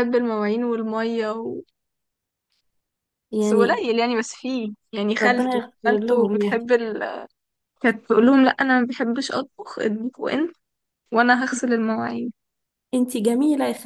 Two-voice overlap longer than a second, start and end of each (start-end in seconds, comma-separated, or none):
5.2-6.7